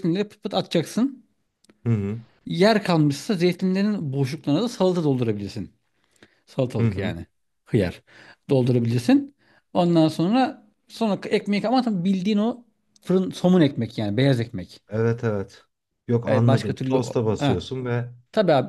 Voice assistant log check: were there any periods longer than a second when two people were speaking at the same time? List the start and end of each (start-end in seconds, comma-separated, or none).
16.2-17.7